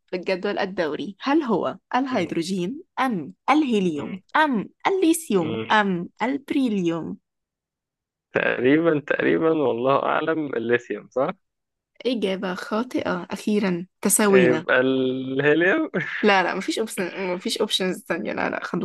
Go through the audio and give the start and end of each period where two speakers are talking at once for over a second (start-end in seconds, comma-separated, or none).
none